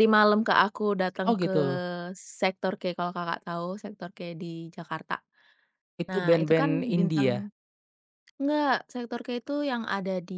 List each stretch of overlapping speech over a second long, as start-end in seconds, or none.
6.1-7.4